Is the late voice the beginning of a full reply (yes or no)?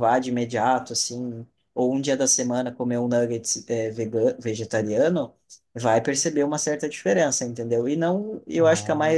no